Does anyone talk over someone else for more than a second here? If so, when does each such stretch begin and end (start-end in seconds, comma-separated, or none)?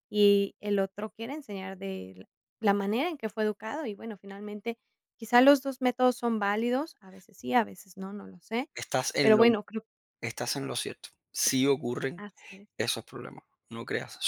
none